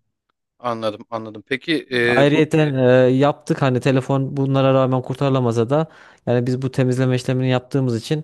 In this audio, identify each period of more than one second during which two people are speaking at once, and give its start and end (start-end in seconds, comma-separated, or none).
none